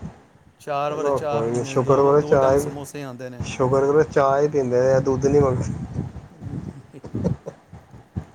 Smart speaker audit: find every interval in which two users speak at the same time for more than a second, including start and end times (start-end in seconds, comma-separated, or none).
0.9-2.7